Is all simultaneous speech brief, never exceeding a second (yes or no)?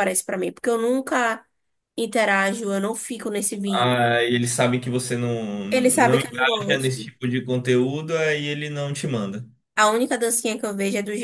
no